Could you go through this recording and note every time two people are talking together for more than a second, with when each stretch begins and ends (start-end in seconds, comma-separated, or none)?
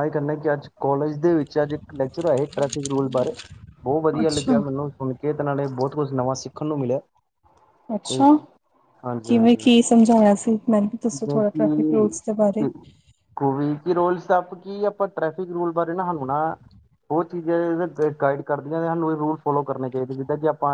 11.1-12.7